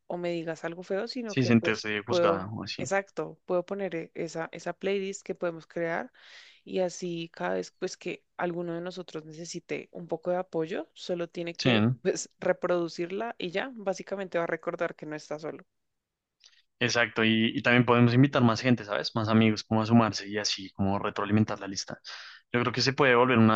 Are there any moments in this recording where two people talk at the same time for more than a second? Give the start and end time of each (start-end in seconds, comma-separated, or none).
1.2-2.9